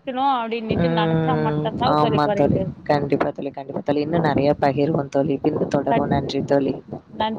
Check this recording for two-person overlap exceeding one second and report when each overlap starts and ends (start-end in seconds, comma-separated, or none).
0.8-2.6